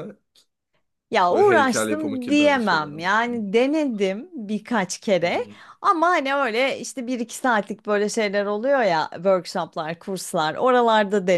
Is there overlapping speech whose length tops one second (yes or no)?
yes